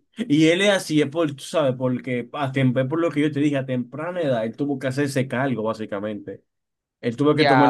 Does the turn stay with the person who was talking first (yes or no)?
no